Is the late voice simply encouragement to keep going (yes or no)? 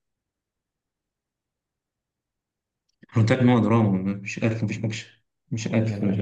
no